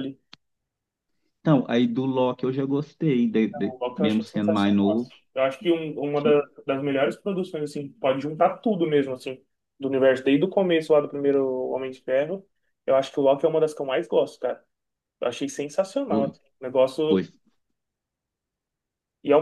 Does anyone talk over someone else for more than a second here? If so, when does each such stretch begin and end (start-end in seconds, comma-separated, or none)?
3.7-5.1